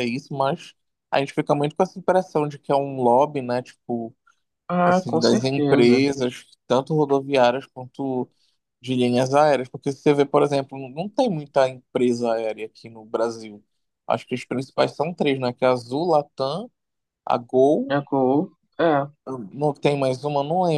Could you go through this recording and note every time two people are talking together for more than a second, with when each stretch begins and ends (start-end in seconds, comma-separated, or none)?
4.8-6.0